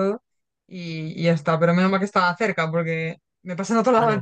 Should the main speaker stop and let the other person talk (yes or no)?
no